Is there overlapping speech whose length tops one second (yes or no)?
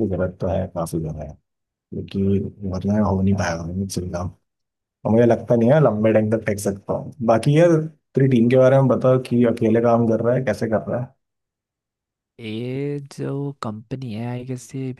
no